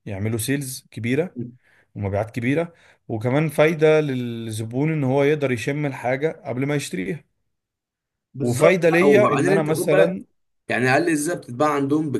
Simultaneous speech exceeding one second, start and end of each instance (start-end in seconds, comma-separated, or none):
8.4-10.2